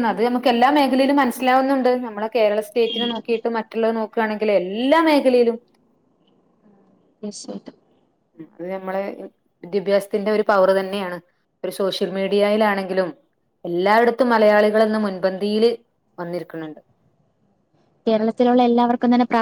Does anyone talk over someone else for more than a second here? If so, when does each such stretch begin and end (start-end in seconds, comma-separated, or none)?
none